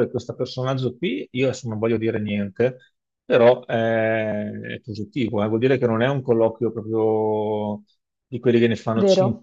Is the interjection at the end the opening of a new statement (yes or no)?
no